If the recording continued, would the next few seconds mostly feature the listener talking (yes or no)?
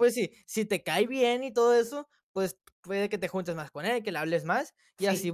no